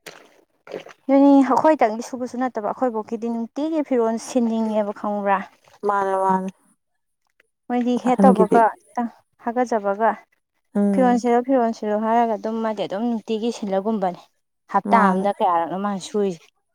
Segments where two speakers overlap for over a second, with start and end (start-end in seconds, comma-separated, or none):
none